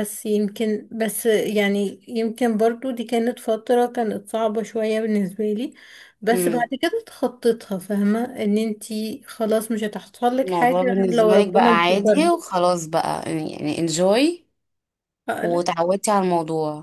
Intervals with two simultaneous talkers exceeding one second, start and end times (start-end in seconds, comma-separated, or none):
10.4-12.3